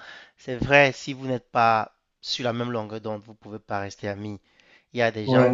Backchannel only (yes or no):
yes